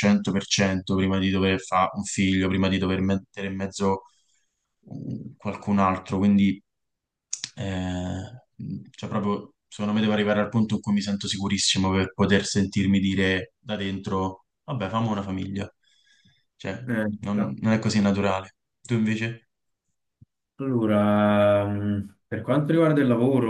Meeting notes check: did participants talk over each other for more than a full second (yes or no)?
no